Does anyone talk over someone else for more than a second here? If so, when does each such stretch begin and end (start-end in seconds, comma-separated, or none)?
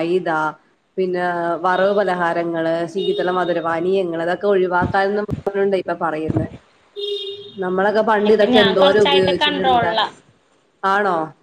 8.3-9.9